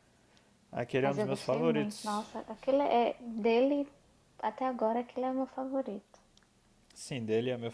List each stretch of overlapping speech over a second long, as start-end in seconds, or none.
1.0-2.2